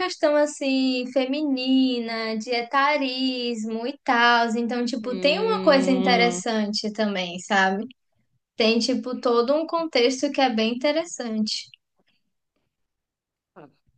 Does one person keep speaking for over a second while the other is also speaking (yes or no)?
yes